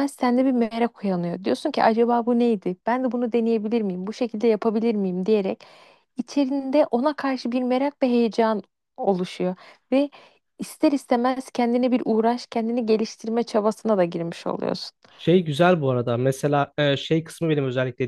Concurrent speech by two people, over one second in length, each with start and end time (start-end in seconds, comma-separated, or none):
none